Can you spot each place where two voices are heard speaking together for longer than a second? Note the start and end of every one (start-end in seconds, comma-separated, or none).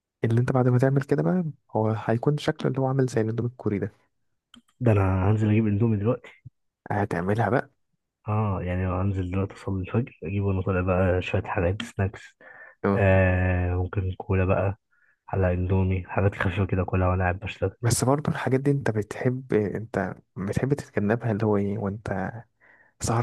none